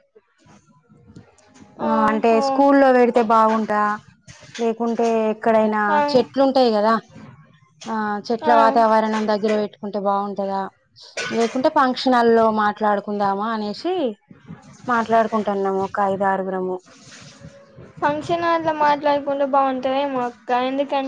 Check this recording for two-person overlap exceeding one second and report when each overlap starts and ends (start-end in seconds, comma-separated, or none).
none